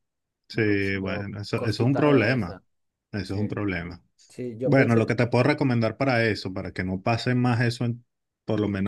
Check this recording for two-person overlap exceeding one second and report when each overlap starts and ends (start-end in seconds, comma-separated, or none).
0.5-2.6